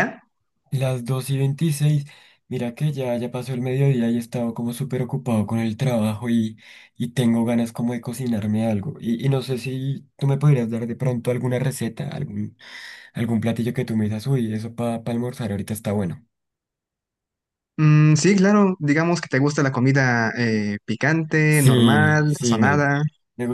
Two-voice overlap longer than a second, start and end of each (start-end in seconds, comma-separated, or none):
21.5-22.9